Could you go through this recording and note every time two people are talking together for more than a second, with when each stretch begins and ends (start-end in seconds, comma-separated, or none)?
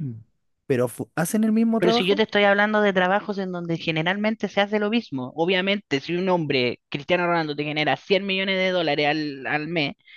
none